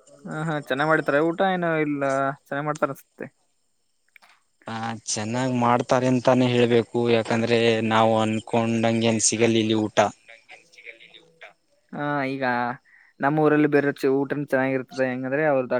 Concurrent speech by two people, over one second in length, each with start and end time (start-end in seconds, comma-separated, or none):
none